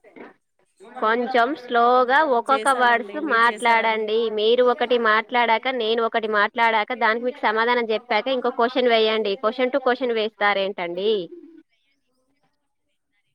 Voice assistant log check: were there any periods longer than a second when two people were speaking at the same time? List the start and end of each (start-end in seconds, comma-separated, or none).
2.5-4.1